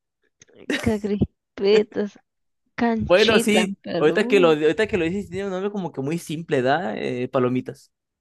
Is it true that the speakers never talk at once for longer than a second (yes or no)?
no